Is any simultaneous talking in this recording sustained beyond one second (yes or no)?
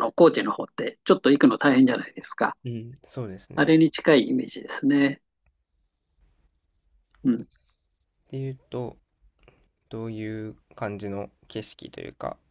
no